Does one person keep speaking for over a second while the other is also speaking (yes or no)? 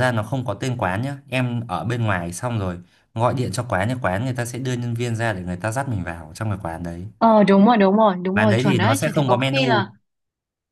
yes